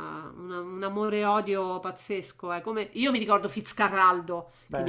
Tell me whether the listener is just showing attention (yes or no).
yes